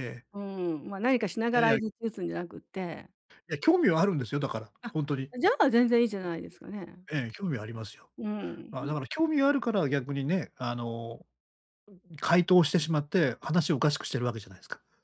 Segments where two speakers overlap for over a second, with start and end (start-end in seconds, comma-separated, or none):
none